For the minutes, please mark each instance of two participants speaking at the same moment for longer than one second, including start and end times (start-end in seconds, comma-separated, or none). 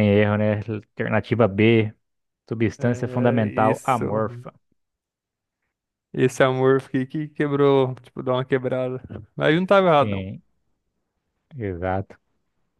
2.8-4.5